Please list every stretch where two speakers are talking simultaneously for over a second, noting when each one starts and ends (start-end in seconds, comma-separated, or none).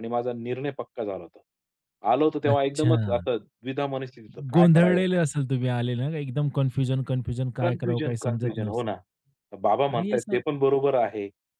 7.6-8.9